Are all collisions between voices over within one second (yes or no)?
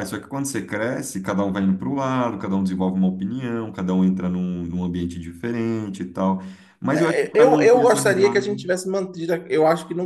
no